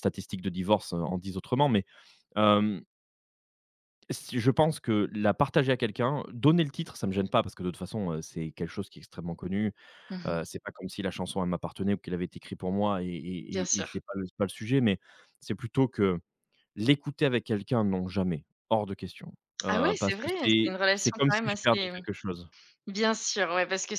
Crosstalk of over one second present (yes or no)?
yes